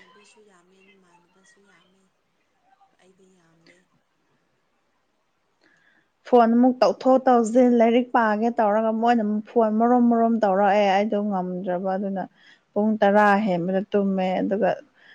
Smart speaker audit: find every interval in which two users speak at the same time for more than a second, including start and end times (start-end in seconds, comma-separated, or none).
none